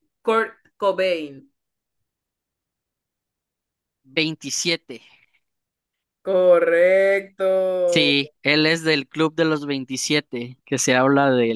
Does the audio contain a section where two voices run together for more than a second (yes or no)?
no